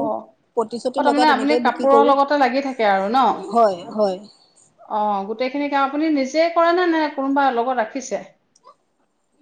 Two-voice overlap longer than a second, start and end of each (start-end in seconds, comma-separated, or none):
0.6-2.1